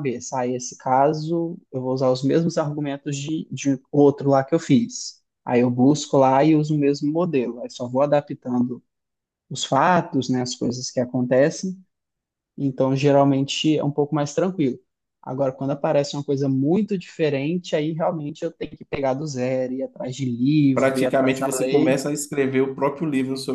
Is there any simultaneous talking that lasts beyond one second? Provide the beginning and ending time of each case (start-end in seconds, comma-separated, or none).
20.7-22.0